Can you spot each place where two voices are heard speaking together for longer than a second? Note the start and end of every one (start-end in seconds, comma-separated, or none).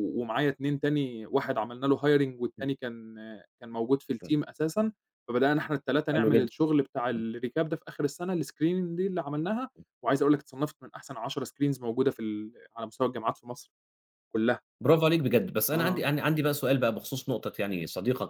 none